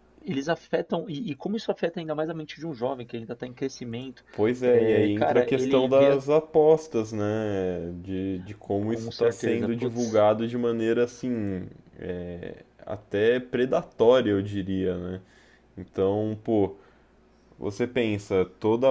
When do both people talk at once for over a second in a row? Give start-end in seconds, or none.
4.7-6.2, 8.9-10.2